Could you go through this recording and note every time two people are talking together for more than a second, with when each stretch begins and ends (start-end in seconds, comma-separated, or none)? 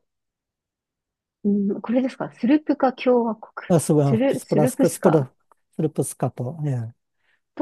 3.7-5.3